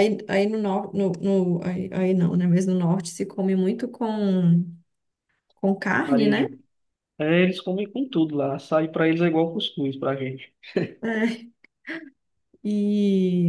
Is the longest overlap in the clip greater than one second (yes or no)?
no